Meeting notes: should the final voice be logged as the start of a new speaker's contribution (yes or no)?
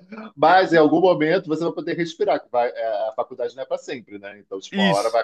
no